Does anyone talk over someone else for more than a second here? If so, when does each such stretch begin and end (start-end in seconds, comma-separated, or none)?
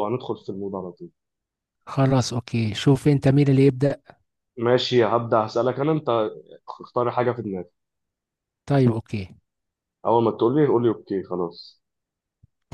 none